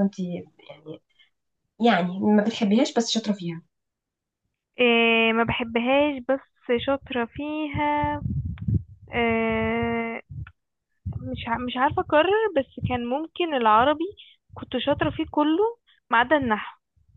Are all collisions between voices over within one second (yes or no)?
yes